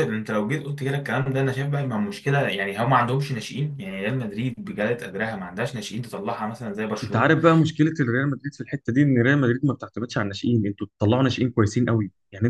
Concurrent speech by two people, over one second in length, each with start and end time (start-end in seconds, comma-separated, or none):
none